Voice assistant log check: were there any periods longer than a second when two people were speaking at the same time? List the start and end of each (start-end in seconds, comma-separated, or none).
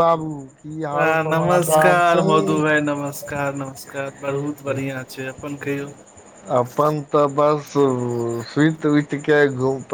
1.3-2.6